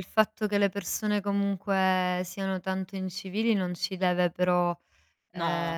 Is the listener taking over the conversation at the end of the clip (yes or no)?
no